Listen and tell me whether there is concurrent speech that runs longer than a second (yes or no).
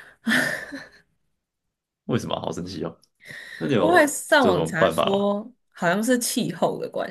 yes